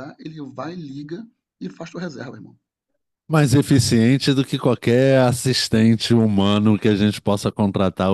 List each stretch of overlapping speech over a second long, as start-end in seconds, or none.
none